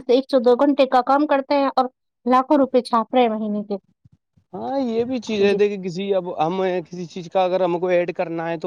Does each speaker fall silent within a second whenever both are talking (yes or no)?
yes